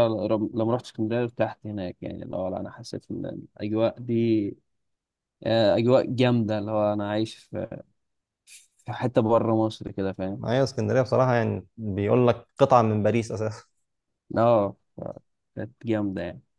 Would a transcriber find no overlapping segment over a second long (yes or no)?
yes